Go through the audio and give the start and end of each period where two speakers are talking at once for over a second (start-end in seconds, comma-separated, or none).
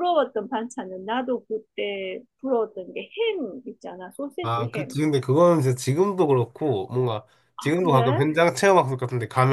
none